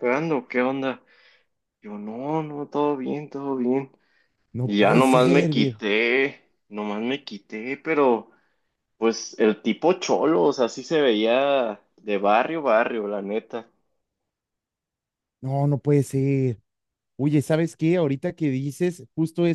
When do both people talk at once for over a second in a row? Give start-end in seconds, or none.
4.6-5.8